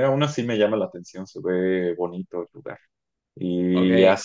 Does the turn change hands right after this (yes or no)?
no